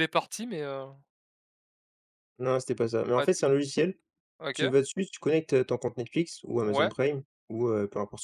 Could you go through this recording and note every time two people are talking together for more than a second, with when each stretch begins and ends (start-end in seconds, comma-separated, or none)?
none